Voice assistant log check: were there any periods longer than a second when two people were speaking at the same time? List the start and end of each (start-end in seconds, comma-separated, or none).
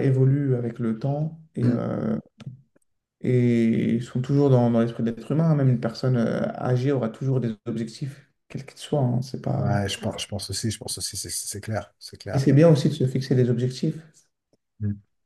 none